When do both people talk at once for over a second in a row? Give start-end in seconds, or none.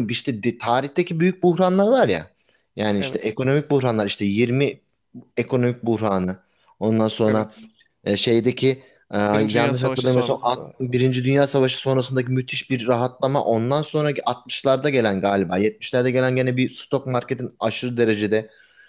9.3-10.6